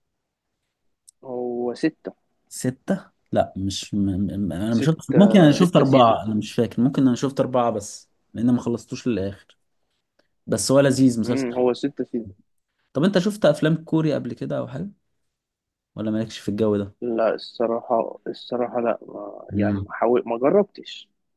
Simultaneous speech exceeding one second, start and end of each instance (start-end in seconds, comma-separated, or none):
4.7-6.4